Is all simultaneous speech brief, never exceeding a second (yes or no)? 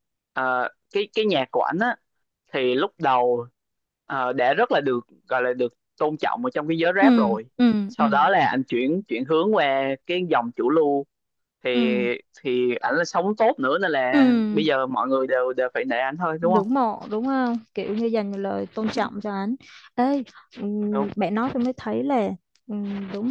yes